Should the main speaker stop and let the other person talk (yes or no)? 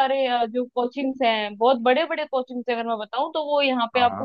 no